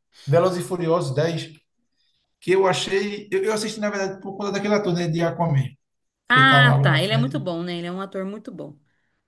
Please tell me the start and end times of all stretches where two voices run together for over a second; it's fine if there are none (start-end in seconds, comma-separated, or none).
6.3-7.5